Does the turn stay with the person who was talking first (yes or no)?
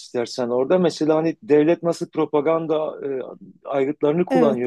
yes